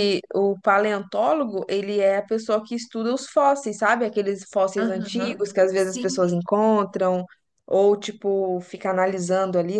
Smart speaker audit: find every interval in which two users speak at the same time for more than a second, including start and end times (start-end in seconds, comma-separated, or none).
4.8-6.3